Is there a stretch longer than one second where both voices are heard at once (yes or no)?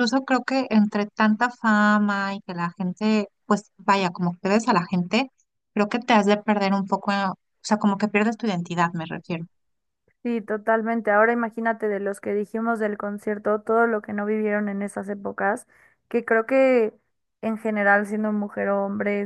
no